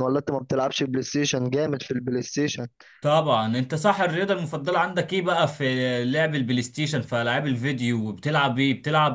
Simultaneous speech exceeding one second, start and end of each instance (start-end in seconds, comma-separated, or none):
none